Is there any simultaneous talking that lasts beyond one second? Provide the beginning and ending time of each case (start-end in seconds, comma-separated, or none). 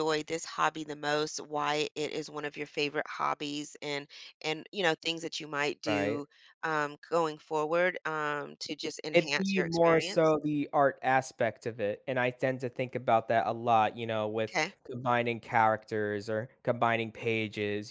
9.1-10.3